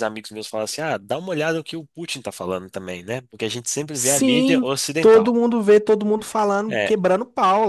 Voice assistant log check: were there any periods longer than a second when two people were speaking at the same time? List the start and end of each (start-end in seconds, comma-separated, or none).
3.9-5.4